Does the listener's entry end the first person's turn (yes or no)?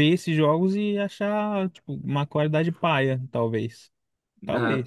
yes